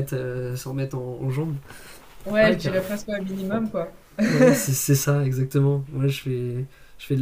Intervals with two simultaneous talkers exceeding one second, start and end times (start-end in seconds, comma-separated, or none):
none